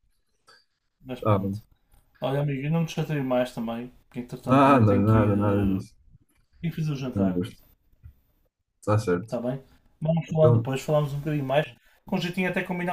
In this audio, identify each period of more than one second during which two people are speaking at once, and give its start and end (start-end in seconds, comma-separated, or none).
4.4-5.8